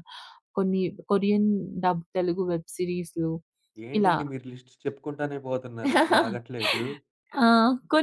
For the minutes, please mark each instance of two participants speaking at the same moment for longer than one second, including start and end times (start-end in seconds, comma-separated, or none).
none